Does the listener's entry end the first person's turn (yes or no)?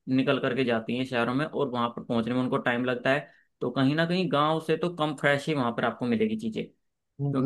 yes